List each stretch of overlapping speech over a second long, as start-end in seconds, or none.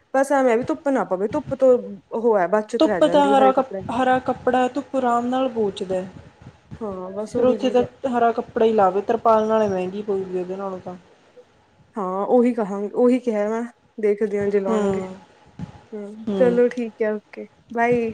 none